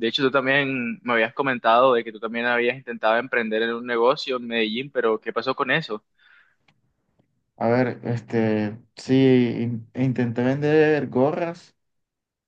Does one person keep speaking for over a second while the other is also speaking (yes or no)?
no